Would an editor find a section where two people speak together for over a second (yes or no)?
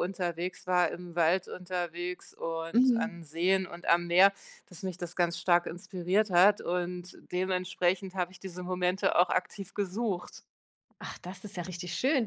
no